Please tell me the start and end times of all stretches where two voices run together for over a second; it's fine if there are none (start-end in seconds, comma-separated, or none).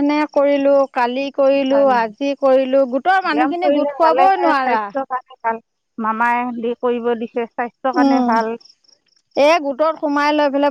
3.3-4.8